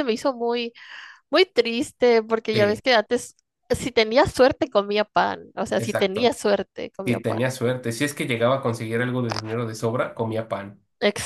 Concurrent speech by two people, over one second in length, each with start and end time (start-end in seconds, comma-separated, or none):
none